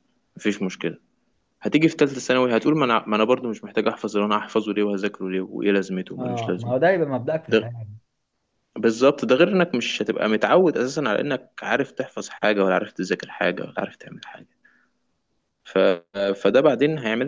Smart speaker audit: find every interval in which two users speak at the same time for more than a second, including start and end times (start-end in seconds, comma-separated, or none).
none